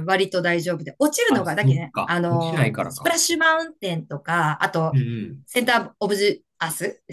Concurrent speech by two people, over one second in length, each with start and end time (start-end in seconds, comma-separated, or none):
1.3-3.2